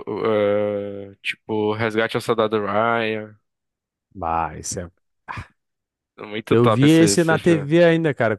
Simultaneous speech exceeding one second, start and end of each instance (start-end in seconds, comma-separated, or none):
6.5-7.7